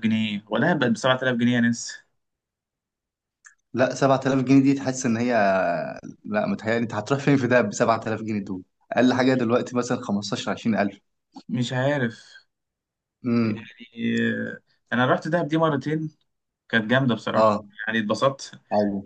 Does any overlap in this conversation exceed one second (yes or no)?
no